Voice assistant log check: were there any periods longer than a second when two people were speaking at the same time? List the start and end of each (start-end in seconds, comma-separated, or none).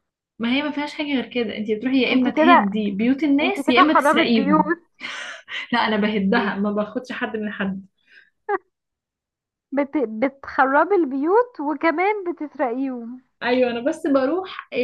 3.4-4.7